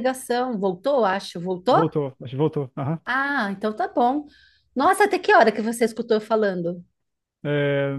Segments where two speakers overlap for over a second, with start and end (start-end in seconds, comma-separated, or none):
none